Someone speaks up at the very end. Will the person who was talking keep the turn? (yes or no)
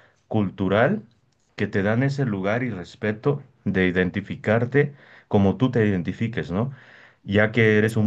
yes